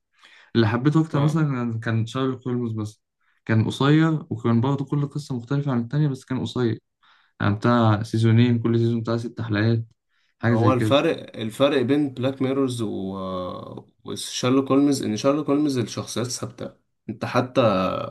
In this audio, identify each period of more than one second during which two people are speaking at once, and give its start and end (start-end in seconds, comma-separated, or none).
none